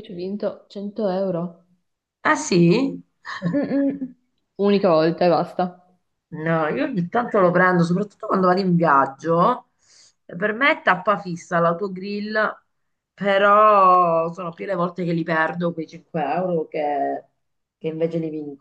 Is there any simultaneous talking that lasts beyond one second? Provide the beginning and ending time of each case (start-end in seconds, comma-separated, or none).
none